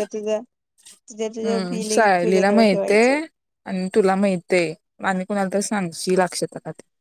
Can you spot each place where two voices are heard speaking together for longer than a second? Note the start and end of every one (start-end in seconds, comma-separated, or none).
1.4-3.2